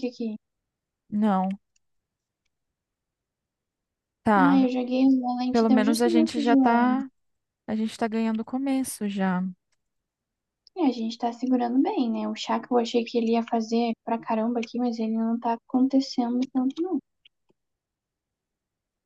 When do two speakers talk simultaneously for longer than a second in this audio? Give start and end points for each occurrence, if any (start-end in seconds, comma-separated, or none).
5.5-7.0